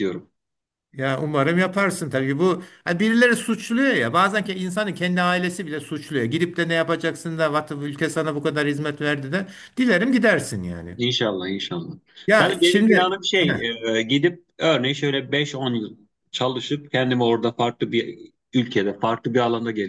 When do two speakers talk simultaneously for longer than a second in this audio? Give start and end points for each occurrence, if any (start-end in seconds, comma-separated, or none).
12.4-13.6